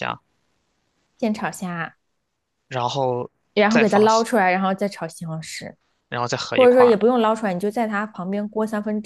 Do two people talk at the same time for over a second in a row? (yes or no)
no